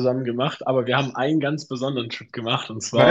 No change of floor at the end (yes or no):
no